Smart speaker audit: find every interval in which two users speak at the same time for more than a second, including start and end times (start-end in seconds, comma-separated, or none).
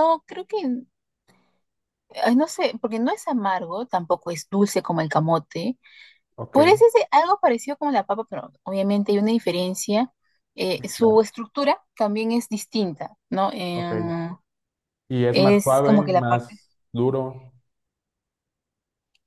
15.3-16.6